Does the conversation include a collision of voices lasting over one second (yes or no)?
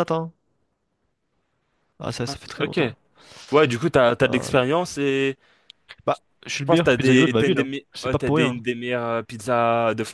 yes